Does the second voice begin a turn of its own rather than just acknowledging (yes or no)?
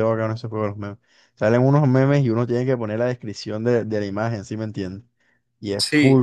no